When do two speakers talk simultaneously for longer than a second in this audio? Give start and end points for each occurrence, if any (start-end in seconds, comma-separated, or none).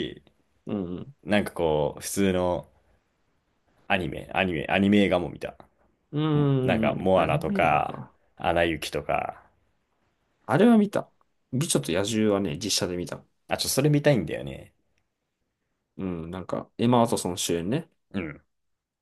6.3-8.2